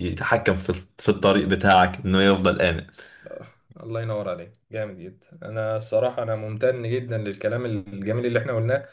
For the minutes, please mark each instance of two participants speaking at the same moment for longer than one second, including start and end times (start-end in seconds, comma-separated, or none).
none